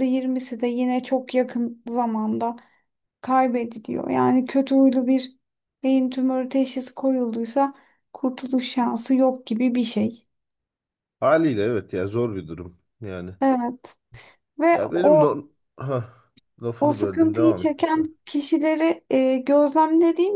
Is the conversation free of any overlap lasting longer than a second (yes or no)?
no